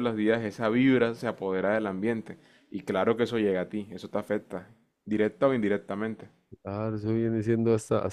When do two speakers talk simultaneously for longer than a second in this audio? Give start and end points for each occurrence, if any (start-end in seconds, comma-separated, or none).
none